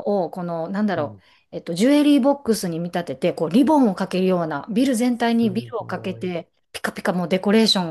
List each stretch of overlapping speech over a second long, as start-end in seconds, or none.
5.1-6.3